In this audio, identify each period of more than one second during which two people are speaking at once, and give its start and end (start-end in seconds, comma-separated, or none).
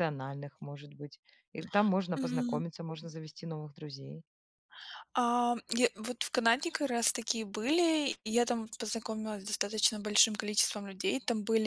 none